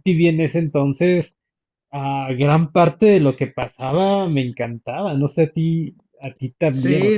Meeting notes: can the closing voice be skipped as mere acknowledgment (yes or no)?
no